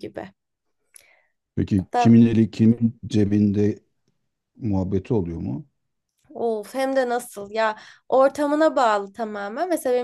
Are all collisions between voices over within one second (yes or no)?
yes